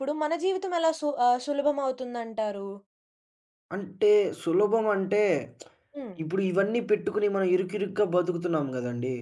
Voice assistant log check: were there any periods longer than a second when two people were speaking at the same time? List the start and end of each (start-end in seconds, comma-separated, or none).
none